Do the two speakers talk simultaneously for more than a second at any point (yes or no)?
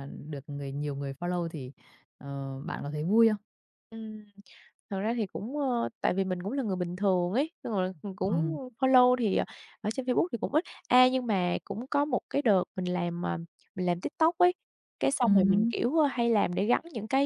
no